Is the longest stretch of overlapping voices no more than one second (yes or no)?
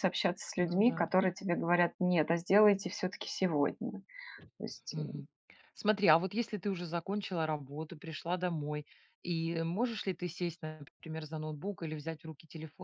yes